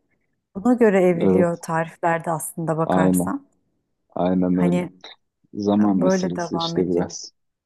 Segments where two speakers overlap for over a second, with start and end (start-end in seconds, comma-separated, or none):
5.8-7.1